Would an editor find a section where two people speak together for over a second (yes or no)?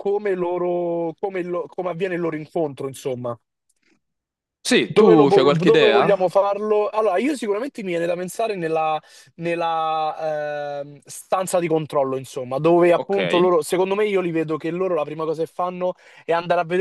yes